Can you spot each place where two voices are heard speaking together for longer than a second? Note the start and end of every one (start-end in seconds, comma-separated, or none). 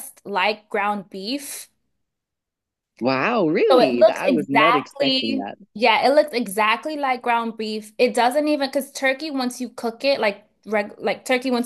3.7-5.5